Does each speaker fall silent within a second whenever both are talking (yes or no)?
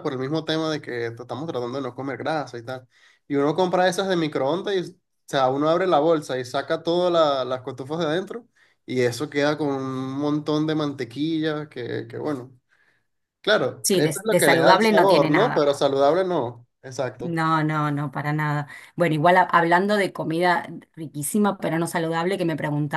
no